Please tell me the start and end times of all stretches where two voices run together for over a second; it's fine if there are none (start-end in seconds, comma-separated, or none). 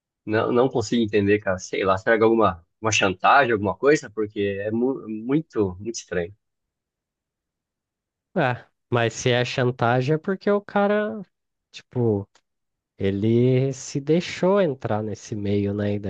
none